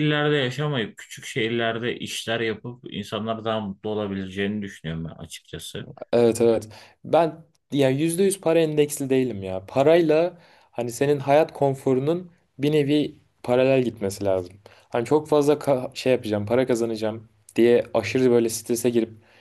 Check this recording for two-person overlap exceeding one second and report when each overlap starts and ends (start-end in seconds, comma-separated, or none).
none